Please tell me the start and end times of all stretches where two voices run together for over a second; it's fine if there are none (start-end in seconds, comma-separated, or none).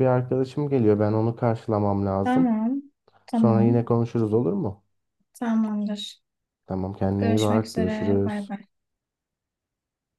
7.2-8.5